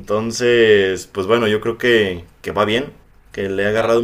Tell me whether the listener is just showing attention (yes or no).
yes